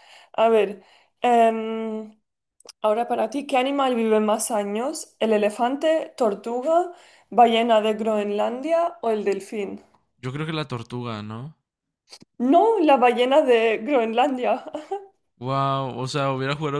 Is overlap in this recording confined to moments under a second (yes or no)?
yes